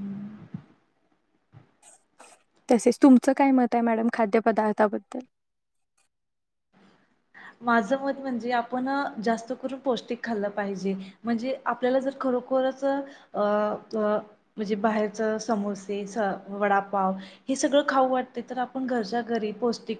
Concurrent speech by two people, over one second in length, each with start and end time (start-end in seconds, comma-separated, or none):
none